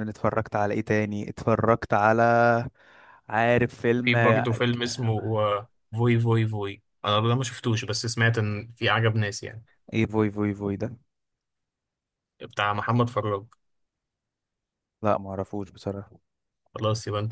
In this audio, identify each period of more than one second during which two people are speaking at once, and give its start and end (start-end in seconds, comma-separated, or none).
none